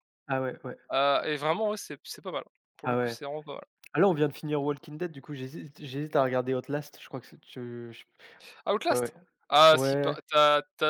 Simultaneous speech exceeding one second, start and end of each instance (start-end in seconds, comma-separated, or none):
none